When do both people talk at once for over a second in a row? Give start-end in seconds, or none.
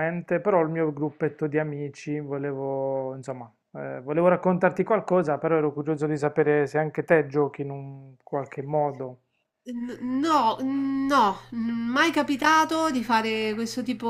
none